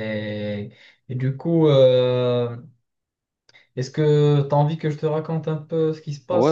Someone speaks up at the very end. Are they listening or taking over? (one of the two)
taking over